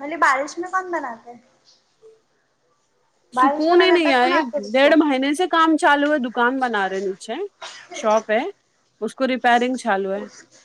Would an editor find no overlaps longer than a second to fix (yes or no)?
no